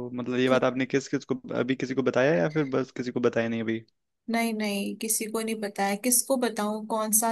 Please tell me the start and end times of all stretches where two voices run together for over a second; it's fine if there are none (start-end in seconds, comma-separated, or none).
none